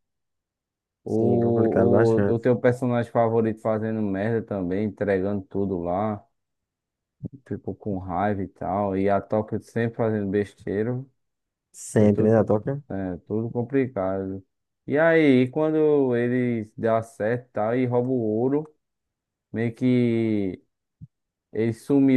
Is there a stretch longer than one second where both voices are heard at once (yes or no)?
yes